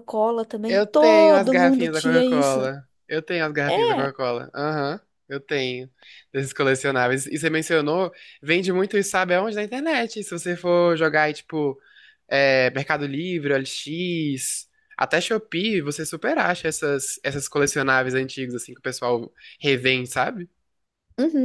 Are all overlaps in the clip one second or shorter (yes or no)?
no